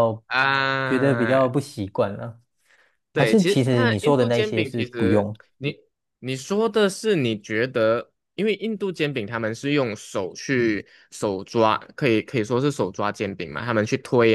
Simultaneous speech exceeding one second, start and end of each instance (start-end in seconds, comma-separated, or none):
3.1-5.4